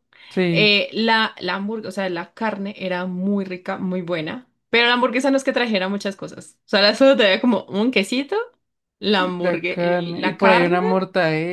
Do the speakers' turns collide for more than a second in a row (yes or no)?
yes